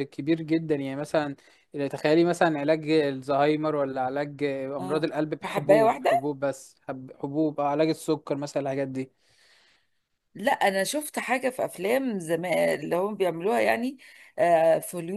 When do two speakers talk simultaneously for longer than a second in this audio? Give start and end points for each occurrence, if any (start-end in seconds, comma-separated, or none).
4.8-6.3